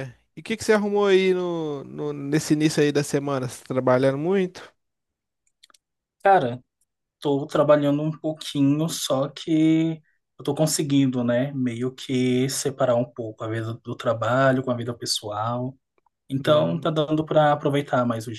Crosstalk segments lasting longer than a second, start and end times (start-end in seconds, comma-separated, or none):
none